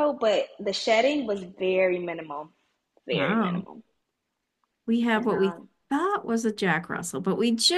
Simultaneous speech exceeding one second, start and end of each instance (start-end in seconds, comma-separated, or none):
none